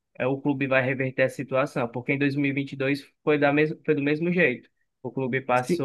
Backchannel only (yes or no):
yes